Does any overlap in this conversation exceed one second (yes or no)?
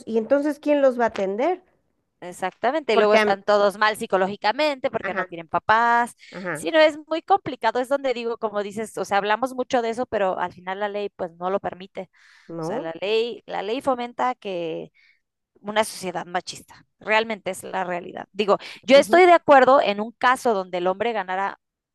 no